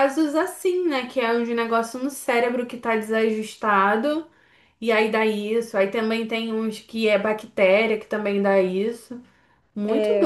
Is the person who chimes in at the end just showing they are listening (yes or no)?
no